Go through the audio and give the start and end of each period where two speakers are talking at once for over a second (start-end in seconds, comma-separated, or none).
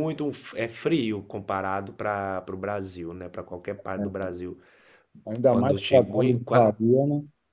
5.5-6.7